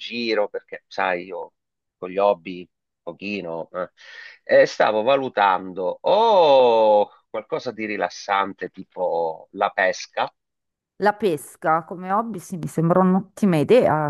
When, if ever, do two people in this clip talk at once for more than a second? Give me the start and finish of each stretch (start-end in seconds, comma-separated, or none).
none